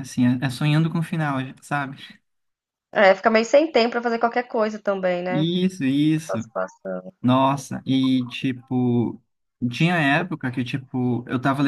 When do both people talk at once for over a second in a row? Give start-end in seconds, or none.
none